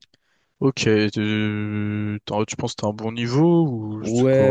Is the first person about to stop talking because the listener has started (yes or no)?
yes